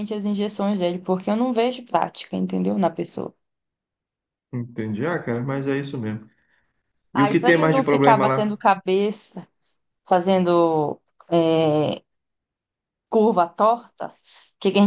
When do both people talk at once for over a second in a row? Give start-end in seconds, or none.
7.1-8.6